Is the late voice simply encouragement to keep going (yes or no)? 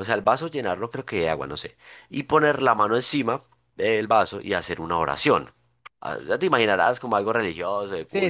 no